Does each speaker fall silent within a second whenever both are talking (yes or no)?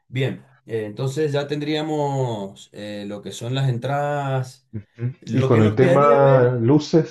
no